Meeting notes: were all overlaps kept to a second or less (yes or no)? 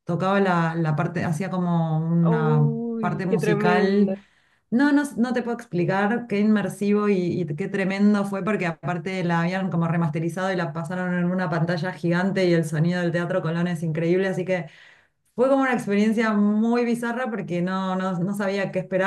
no